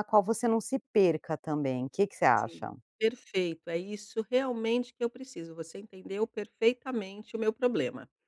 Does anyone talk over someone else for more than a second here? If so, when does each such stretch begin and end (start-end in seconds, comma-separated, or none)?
none